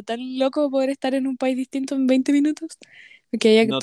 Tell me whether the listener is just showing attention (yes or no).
no